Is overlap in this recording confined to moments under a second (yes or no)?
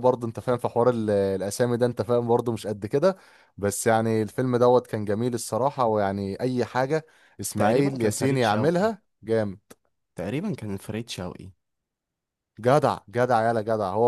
no